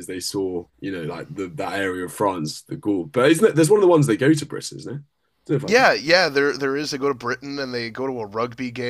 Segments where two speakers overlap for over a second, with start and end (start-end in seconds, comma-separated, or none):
none